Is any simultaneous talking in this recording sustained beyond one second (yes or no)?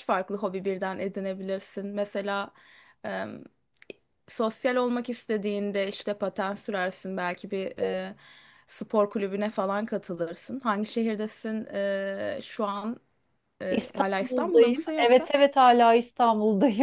yes